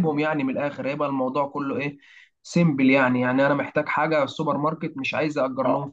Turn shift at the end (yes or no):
yes